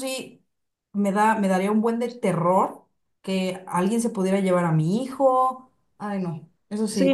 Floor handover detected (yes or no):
yes